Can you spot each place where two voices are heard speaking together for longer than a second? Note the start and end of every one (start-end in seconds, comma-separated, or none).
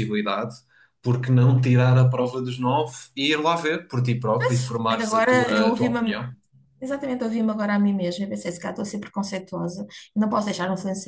4.4-6.2